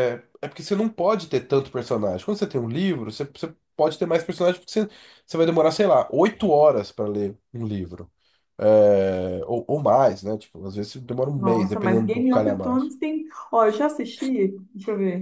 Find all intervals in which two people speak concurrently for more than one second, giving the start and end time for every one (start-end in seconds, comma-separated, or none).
11.3-12.9